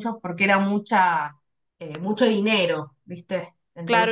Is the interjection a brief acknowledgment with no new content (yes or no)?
no